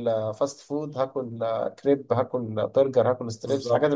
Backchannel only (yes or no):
no